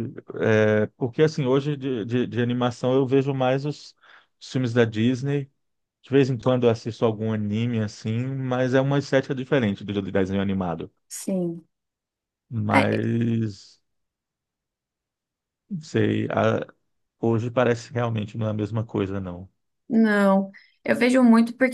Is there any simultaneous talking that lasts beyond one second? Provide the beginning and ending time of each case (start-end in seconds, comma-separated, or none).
none